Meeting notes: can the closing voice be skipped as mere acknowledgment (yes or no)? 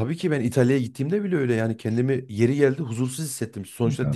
yes